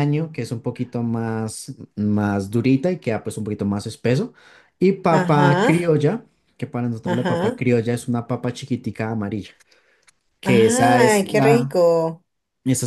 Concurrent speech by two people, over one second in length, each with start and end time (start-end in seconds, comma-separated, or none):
10.4-11.8